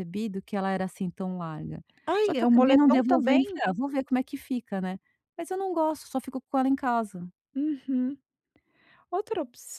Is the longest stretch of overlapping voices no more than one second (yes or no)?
no